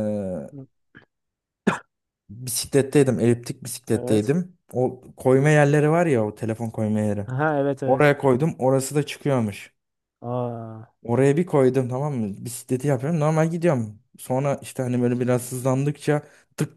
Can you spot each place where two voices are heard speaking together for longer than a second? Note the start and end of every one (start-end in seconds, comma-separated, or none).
none